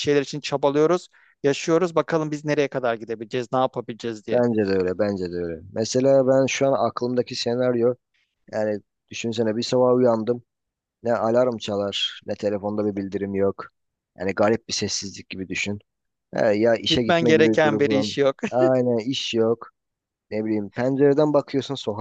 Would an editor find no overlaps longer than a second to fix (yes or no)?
no